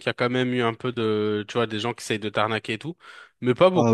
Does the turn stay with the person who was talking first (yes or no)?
no